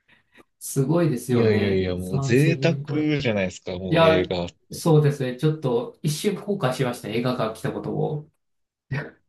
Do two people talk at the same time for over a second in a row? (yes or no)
yes